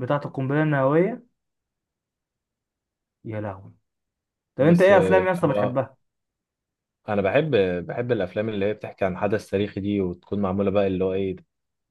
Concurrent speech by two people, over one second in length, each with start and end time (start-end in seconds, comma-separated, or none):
4.6-5.8